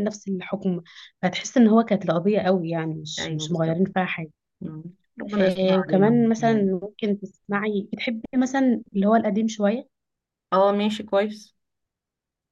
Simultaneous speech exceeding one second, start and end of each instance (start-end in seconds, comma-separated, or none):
5.4-6.7